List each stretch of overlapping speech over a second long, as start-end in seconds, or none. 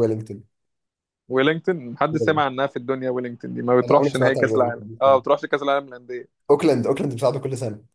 3.8-5.2